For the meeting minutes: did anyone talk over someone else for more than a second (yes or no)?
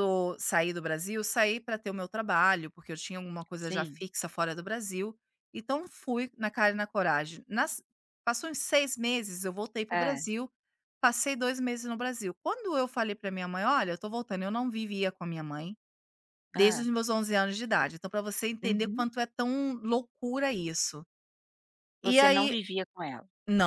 no